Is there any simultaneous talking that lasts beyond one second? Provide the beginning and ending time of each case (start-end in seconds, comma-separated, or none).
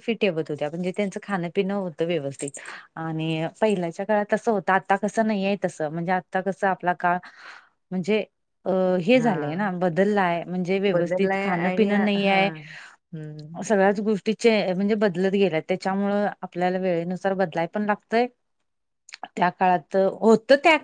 10.9-12.5